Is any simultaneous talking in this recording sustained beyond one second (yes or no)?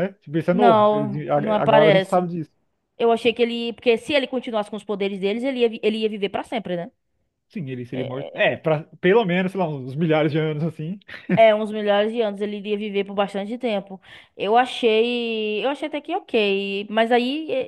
yes